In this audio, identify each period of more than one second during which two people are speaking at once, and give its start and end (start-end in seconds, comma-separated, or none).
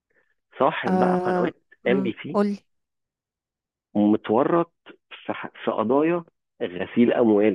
0.9-2.4